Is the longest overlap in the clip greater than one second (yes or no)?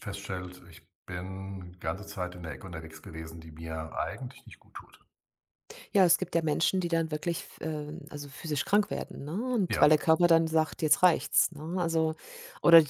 no